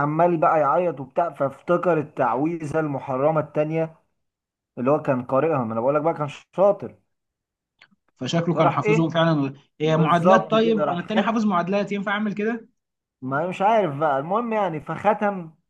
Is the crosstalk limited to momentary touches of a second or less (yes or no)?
no